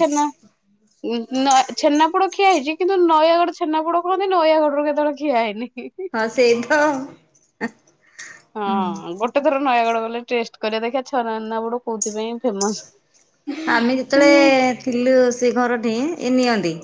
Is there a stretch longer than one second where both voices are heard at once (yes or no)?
no